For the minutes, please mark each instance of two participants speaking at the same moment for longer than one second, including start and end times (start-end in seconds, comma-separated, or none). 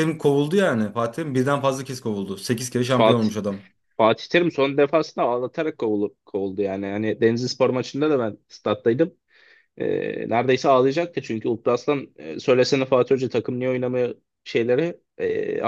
none